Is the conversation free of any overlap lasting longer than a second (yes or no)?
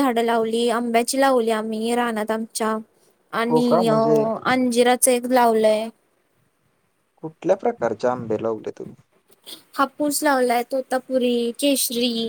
yes